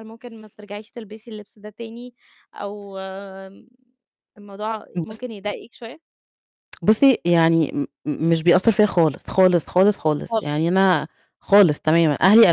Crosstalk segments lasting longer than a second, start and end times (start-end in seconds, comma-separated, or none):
none